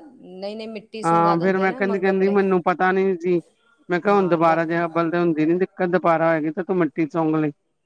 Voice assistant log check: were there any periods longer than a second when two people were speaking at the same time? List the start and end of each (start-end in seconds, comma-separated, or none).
1.1-2.4